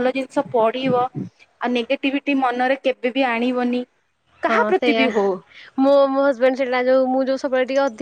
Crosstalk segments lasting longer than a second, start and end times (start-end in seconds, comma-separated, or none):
none